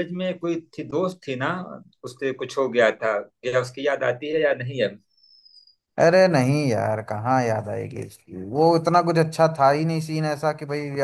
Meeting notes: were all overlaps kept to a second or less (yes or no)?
yes